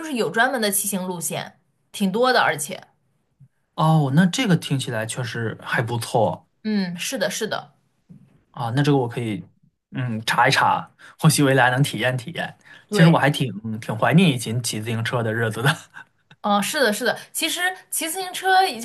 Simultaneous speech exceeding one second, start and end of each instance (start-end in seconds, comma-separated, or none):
none